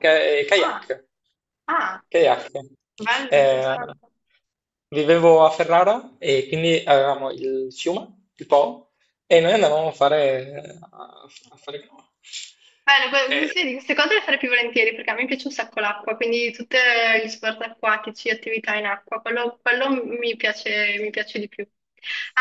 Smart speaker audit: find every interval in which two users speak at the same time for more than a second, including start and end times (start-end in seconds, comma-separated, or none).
none